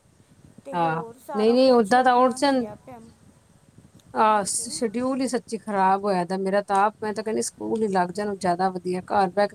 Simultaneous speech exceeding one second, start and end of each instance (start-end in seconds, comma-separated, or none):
0.7-2.6